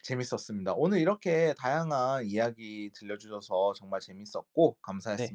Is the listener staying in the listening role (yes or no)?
no